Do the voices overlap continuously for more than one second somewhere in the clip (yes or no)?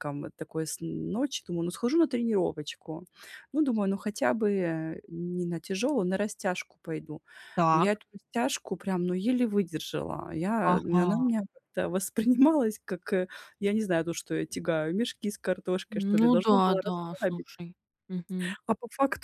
yes